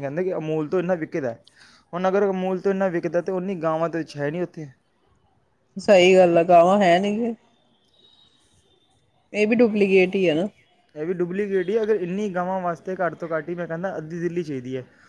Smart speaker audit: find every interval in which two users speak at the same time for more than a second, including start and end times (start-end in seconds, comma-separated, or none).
none